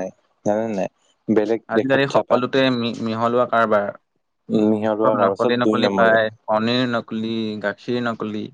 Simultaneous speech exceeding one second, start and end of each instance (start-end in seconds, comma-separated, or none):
4.5-6.2